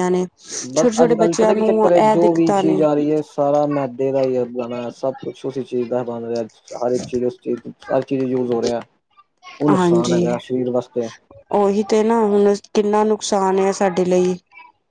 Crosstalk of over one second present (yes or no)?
yes